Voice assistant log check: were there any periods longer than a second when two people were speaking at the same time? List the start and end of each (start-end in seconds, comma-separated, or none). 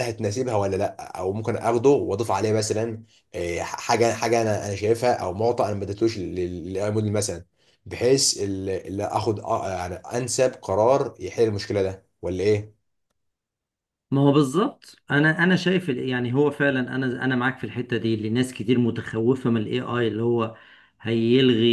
none